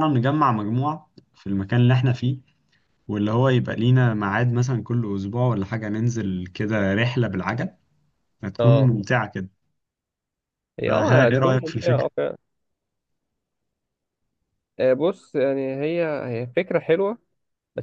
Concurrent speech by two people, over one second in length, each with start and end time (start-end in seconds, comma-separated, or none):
10.9-12.1